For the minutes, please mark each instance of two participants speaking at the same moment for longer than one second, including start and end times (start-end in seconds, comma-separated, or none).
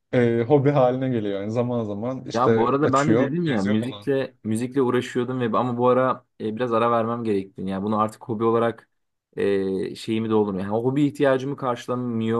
2.3-4.1